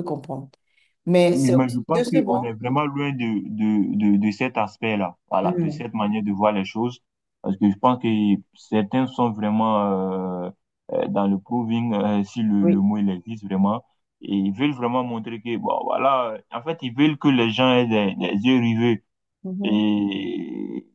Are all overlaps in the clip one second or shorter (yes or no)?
no